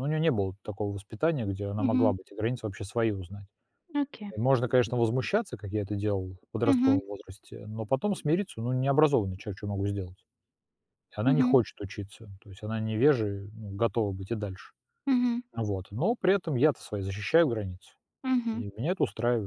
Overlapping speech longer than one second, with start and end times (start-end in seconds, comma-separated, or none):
none